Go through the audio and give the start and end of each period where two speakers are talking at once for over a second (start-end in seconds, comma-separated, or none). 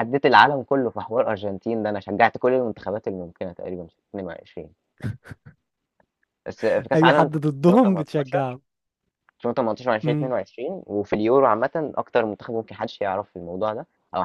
6.9-8.6